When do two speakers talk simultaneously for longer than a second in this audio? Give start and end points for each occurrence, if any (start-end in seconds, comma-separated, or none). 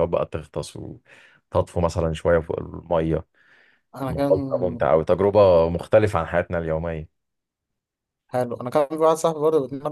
none